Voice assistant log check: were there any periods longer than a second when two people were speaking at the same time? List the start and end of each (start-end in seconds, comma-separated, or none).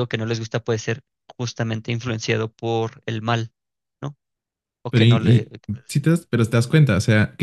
none